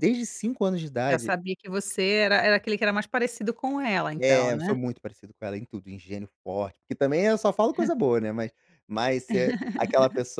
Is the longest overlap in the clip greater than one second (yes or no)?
no